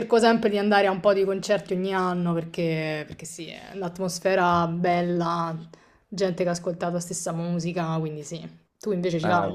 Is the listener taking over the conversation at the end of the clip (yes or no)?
yes